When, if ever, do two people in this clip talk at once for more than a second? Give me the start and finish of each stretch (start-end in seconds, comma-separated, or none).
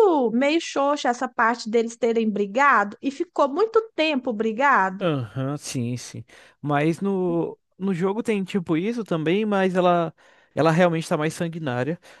none